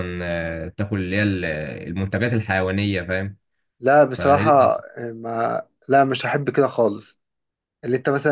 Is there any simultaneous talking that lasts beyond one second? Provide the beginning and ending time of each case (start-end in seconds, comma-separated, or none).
none